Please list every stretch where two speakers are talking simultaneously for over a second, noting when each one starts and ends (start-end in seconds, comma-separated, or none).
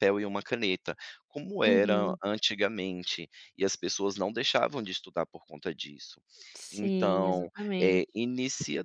6.7-8.0